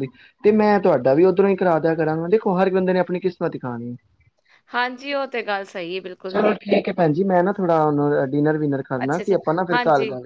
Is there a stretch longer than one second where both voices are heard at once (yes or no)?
no